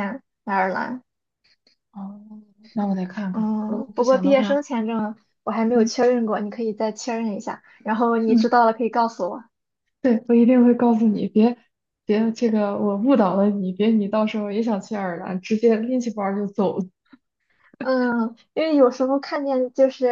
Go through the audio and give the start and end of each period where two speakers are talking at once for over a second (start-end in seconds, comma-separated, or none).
3.3-4.6